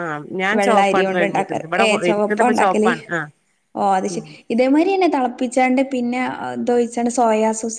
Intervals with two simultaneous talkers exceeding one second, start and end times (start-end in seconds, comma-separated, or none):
0.6-2.9